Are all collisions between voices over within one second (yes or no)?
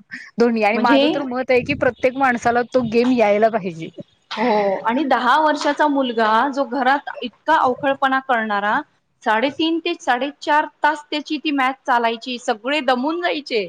yes